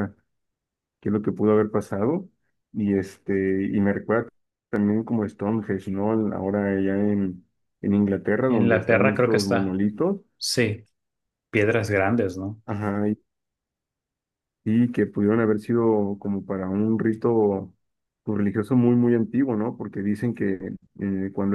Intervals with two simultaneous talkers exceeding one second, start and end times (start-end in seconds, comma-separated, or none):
8.5-9.8